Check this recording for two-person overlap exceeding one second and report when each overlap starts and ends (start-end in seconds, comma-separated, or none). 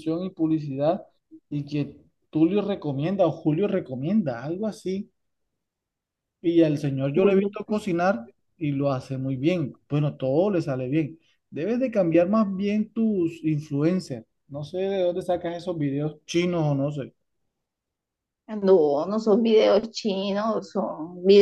none